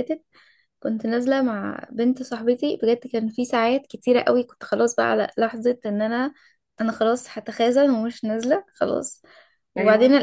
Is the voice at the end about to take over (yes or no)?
no